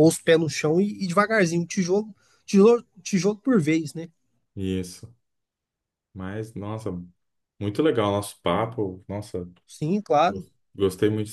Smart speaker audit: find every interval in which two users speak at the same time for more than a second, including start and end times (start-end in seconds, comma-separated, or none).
none